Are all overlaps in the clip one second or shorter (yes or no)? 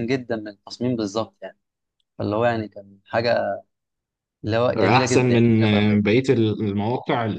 no